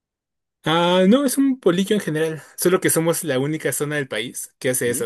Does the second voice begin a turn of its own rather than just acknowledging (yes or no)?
no